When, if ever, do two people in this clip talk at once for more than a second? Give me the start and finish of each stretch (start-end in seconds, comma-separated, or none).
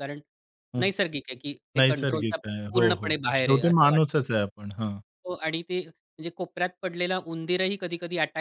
1.8-4.0